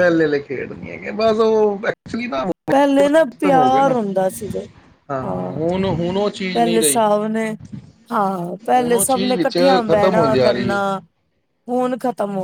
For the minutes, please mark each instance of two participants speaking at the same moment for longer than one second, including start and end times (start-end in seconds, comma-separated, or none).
8.7-10.8